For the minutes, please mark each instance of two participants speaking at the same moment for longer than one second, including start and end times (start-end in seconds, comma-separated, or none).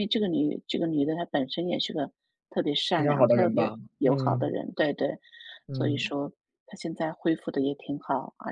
3.0-4.6